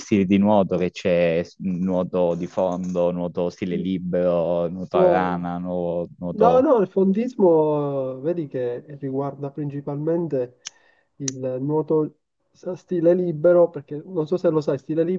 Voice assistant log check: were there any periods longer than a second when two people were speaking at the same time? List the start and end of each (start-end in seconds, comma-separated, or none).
none